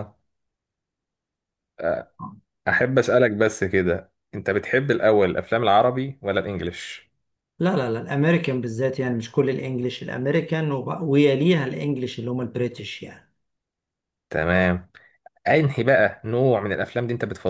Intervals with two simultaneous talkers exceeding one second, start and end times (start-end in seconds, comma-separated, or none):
none